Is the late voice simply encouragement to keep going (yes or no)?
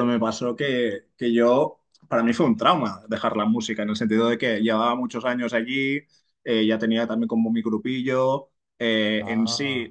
yes